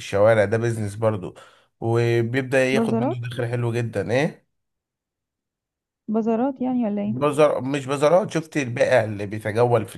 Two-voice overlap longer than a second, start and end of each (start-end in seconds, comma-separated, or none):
none